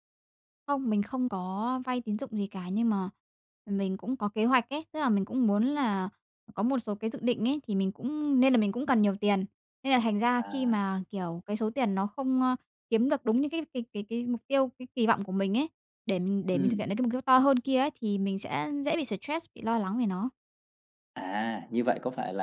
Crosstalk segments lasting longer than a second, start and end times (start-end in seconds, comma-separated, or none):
none